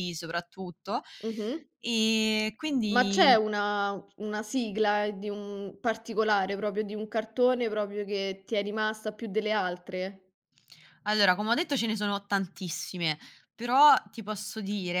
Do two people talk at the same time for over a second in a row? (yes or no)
no